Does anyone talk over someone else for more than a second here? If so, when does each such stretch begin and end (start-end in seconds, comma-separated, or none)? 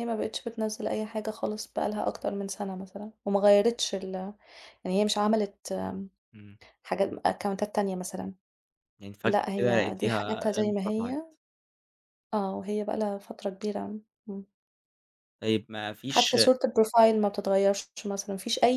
9.2-11.2